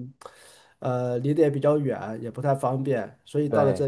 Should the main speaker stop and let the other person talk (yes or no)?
no